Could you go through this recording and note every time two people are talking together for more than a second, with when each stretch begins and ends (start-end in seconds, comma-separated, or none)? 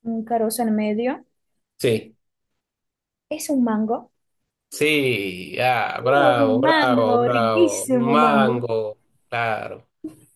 6.0-8.6